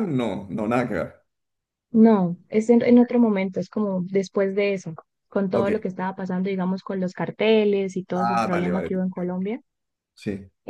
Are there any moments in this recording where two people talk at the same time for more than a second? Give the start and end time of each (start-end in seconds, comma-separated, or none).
8.1-9.3